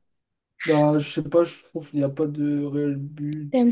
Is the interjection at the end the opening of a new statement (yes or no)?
no